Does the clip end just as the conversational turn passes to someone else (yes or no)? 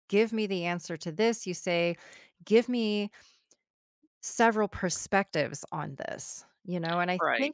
no